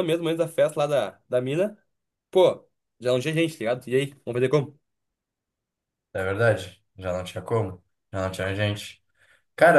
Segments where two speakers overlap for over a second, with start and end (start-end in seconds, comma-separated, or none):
none